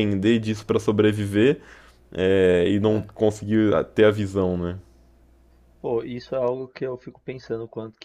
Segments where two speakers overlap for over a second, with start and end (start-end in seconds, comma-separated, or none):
none